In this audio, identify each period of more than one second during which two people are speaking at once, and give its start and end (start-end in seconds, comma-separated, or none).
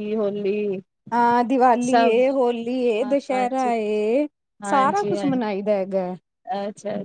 none